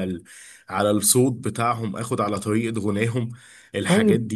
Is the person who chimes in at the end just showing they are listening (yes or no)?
no